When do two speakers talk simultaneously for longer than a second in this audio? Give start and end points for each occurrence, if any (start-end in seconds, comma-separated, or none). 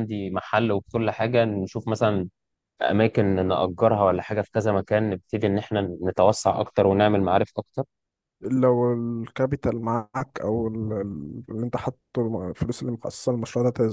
none